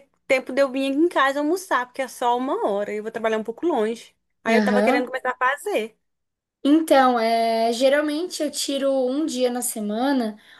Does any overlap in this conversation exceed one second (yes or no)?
no